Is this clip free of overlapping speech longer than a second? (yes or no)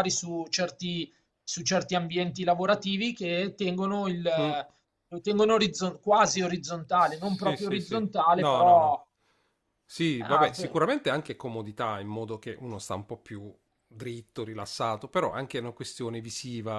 no